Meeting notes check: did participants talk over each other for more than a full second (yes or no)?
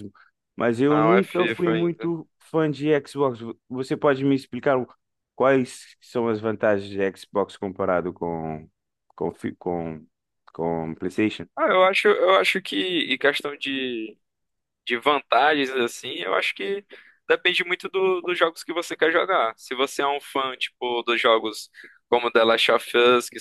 yes